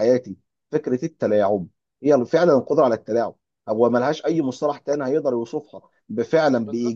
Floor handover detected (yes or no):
no